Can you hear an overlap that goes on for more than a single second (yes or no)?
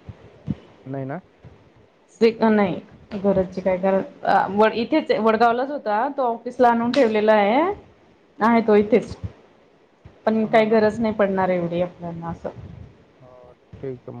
no